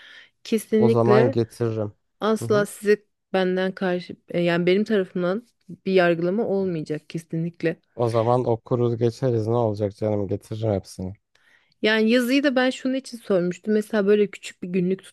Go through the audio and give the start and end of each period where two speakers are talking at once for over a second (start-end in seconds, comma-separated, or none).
none